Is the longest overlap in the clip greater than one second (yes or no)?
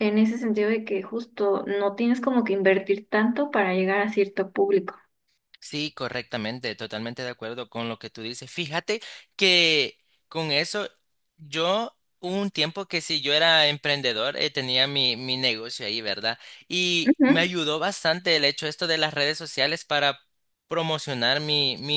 no